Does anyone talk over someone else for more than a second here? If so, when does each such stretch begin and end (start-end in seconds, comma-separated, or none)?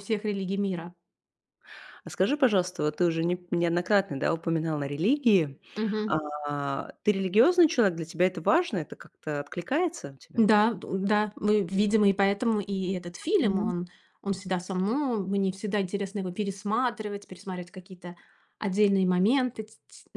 none